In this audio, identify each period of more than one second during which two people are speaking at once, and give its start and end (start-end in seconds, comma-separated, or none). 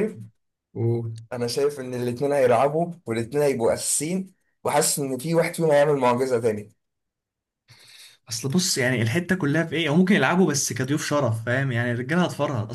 none